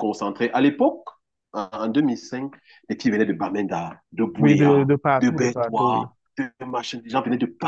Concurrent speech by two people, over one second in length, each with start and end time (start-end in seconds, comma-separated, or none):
4.4-6.1